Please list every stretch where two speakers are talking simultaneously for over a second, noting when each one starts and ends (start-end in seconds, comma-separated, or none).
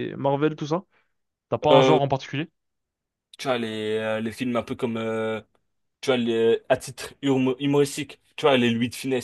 none